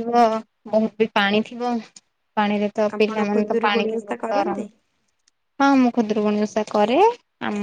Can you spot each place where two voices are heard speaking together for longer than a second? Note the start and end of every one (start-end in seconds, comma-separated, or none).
3.0-4.6